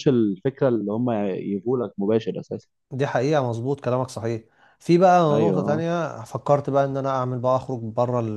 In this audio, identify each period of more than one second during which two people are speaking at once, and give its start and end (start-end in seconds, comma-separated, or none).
none